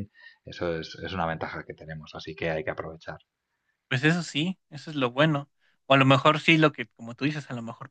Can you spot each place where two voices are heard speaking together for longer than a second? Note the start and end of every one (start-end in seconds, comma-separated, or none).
none